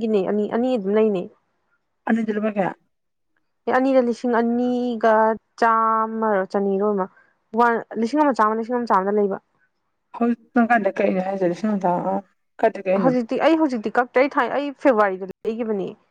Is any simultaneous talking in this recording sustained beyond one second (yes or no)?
no